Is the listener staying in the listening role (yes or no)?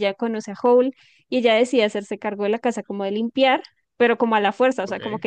yes